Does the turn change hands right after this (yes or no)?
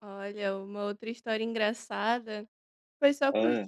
no